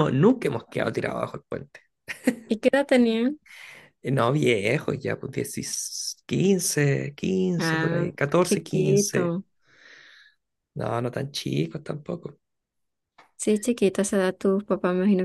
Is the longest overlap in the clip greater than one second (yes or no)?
yes